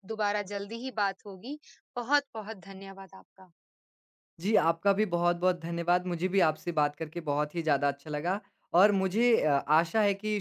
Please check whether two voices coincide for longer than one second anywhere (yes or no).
no